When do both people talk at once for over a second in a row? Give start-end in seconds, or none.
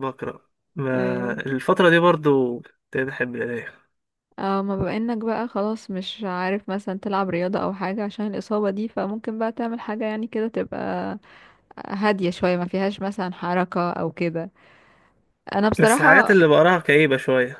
none